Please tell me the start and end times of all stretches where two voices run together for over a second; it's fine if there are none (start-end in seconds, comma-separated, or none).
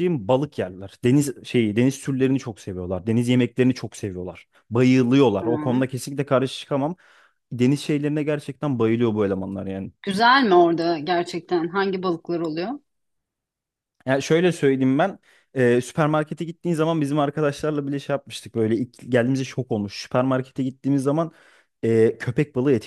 none